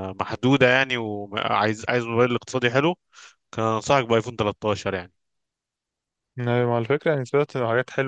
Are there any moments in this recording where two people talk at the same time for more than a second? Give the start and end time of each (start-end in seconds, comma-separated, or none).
none